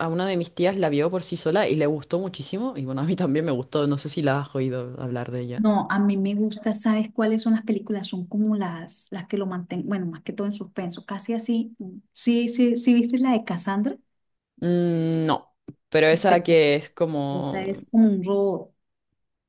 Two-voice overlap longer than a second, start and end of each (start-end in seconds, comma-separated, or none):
none